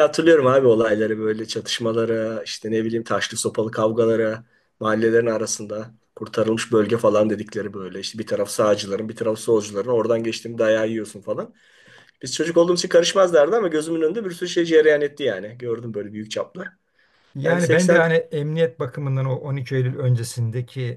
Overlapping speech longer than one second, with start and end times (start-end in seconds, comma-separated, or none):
none